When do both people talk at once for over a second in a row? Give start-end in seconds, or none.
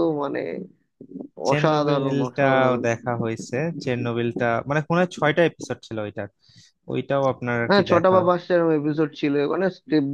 1.5-2.8